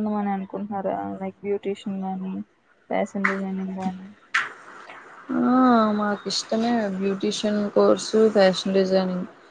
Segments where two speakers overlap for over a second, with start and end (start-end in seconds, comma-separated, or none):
none